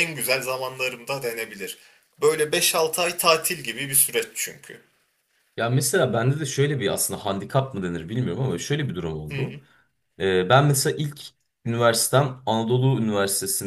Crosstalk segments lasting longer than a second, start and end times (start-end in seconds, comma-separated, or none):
none